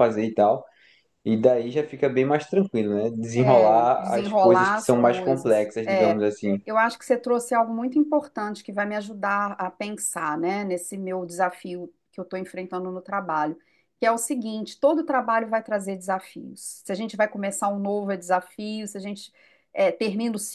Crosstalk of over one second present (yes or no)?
yes